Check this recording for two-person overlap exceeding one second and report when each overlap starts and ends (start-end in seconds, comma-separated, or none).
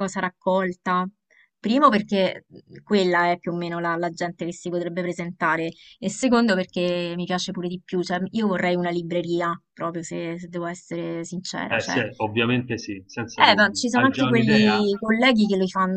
13.3-14.9